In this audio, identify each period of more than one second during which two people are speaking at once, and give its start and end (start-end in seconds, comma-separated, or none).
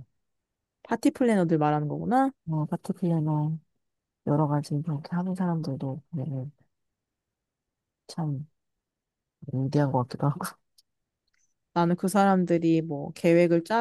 none